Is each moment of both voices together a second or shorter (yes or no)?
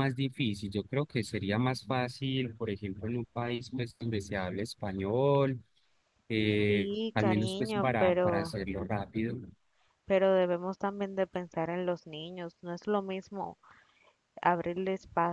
no